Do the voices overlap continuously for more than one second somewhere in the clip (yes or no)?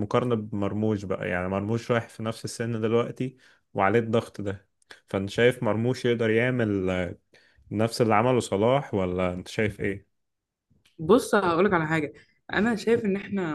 no